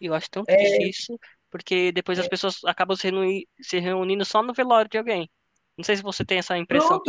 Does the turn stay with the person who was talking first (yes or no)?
no